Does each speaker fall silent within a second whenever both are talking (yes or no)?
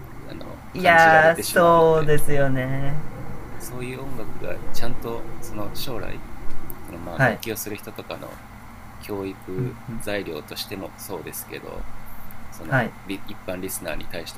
no